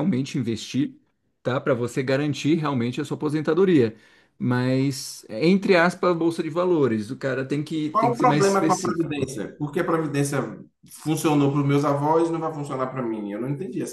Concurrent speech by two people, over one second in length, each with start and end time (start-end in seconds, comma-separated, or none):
7.9-9.3